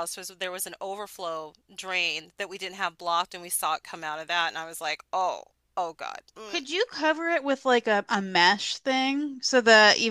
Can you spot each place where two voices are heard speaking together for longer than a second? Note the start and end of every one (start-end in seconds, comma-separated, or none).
none